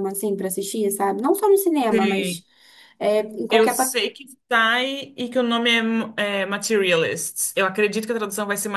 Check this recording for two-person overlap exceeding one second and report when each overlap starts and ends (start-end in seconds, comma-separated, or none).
none